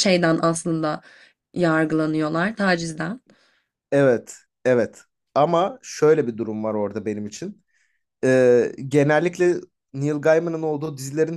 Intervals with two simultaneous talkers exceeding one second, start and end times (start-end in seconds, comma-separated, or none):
none